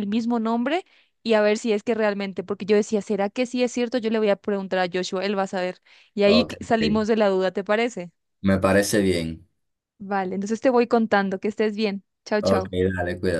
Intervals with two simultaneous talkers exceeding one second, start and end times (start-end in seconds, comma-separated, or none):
none